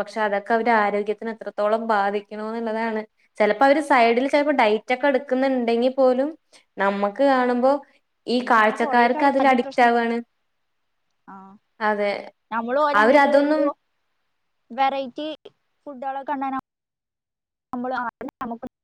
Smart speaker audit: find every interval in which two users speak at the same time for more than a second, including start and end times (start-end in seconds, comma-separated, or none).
8.4-10.1